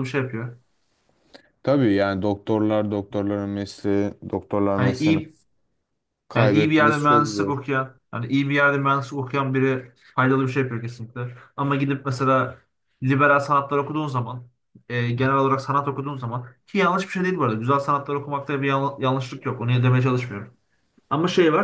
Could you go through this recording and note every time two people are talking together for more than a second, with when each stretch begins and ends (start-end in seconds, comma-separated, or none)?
6.3-7.6